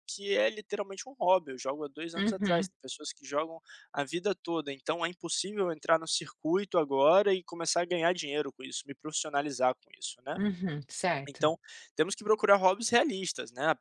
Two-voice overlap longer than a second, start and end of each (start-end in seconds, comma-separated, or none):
none